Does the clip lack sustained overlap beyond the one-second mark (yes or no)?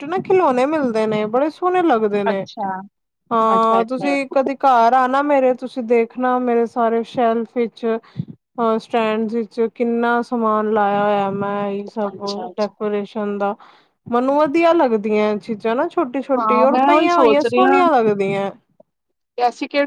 no